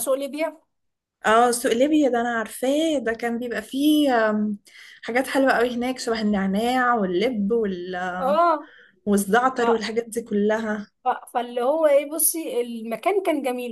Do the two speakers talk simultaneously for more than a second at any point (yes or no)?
no